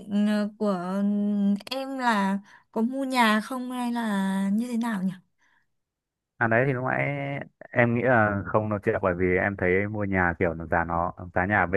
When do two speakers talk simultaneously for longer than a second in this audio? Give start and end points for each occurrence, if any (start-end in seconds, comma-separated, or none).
none